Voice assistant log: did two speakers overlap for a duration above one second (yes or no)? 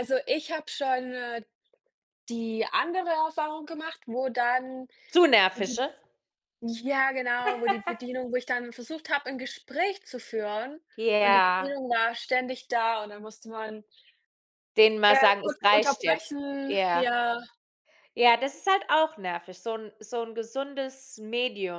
yes